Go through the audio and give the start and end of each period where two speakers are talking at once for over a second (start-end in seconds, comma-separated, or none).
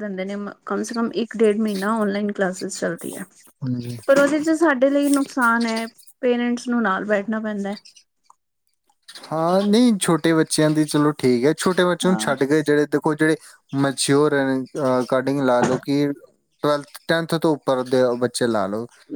none